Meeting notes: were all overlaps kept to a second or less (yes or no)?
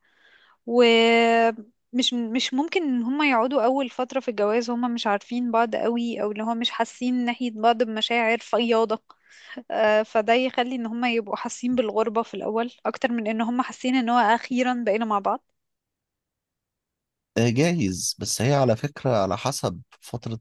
yes